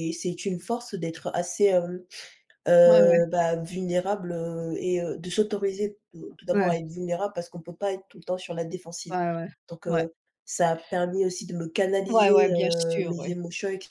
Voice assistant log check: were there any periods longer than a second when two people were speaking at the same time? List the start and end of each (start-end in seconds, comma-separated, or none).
12.1-13.3